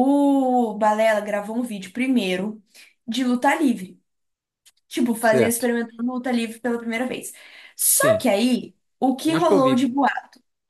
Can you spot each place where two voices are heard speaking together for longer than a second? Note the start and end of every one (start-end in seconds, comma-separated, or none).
none